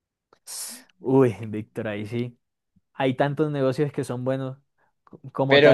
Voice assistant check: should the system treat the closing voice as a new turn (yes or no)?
yes